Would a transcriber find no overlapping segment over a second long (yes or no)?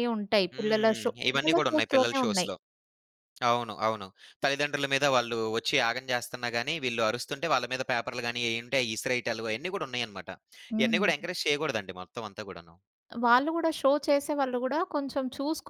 no